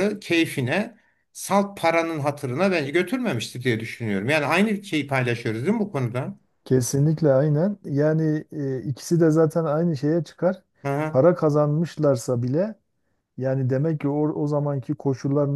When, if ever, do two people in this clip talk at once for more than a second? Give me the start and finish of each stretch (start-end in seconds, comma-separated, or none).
none